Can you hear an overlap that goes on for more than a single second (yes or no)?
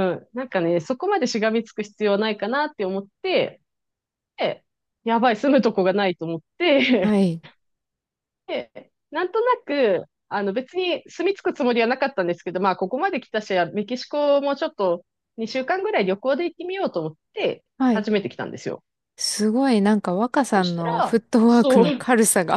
yes